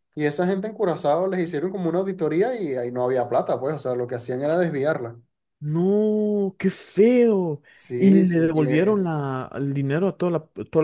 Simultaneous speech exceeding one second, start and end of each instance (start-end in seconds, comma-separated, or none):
7.7-9.2